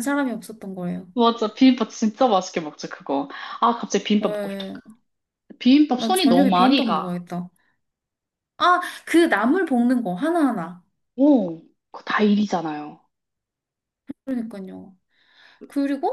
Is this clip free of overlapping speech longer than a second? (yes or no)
no